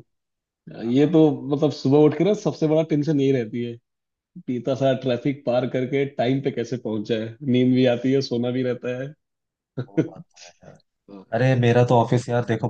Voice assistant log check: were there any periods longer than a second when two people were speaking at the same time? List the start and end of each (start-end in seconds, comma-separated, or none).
none